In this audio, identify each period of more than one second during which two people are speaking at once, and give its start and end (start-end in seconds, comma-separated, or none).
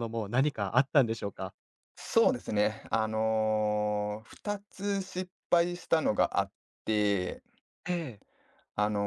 none